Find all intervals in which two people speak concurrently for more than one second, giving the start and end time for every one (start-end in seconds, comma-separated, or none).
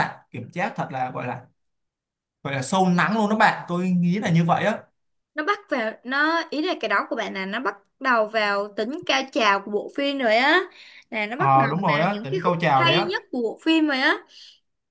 11.3-13.1